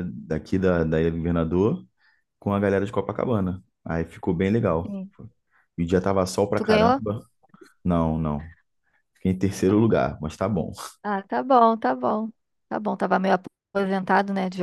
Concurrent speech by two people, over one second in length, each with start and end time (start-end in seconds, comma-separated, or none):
none